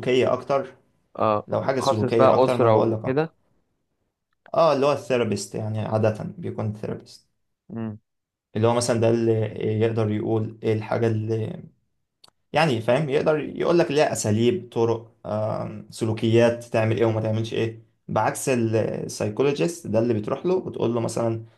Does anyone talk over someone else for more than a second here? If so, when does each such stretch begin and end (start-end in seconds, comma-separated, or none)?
1.5-3.2